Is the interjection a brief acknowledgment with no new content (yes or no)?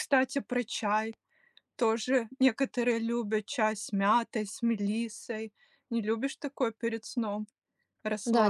no